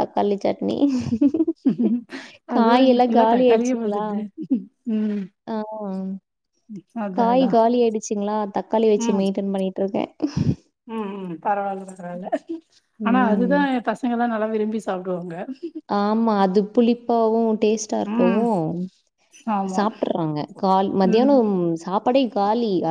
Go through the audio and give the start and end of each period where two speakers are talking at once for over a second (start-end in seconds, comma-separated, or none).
2.5-4.0